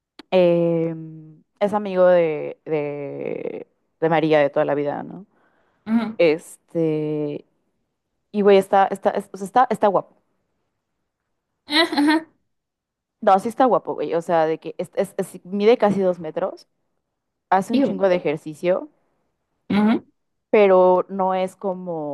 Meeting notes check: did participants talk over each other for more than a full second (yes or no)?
no